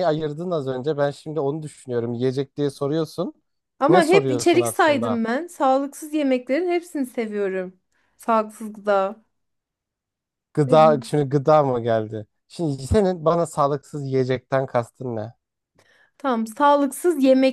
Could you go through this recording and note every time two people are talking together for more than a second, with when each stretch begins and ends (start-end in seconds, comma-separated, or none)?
3.9-5.2